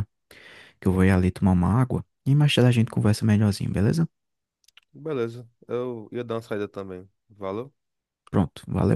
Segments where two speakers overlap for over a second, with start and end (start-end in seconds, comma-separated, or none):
none